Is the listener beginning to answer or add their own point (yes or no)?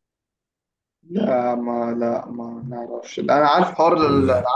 no